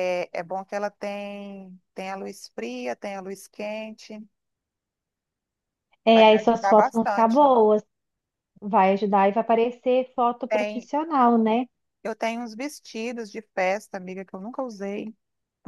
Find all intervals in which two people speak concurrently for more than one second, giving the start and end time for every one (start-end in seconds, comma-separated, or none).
6.1-7.5